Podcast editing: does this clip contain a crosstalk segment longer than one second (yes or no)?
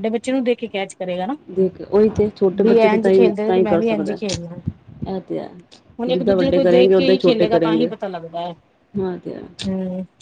yes